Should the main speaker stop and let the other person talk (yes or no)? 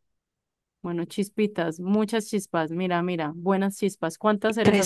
yes